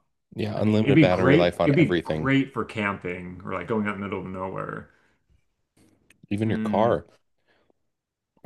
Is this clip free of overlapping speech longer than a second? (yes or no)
no